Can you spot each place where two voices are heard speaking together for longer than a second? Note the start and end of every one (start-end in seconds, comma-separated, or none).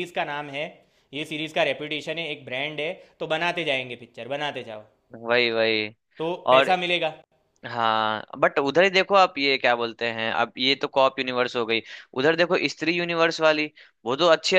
none